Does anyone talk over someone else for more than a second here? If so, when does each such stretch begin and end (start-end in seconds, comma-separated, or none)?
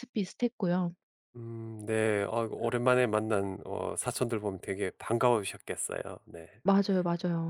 none